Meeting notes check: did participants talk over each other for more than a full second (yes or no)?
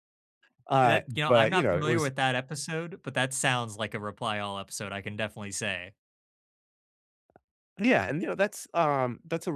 yes